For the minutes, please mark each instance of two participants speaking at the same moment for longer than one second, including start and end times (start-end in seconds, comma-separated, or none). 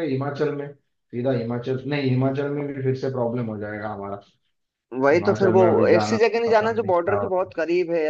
5.0-7.5